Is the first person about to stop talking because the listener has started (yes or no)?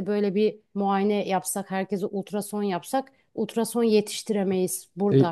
yes